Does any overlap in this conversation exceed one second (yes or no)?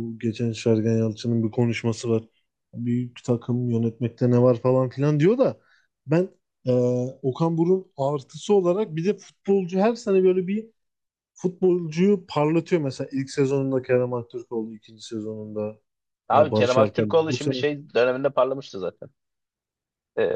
yes